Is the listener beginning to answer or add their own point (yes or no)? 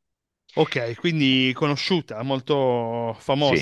yes